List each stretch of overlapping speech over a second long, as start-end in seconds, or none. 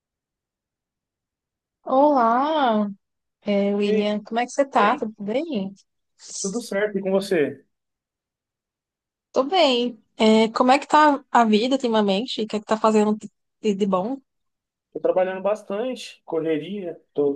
none